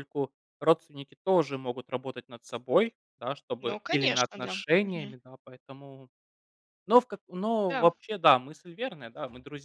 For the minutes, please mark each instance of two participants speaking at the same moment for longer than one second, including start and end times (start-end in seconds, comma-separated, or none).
3.6-5.2